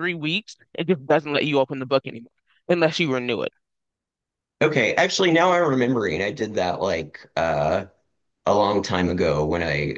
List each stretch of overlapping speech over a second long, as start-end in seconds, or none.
none